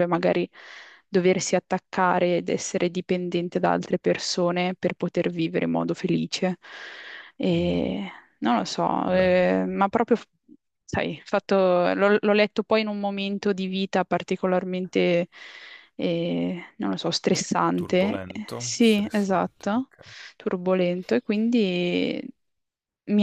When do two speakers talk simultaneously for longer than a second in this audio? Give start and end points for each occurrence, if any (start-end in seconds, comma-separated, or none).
17.7-19.9